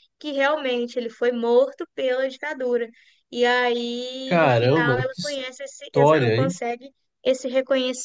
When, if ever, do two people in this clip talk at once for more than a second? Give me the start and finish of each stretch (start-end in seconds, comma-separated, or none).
4.2-6.6